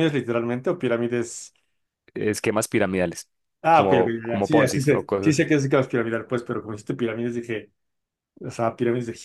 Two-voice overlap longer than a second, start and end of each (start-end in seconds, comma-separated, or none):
3.7-5.5